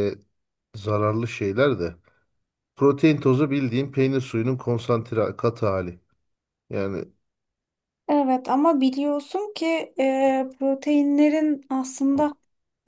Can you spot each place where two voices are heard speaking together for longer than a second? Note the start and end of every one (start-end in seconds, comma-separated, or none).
none